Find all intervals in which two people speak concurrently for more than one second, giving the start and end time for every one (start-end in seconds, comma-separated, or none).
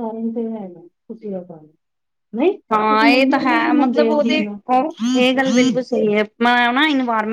none